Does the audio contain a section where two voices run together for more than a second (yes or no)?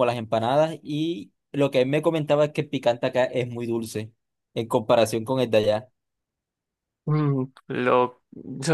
no